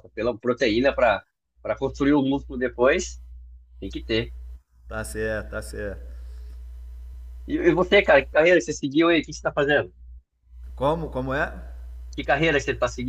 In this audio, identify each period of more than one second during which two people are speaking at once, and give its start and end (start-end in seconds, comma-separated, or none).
none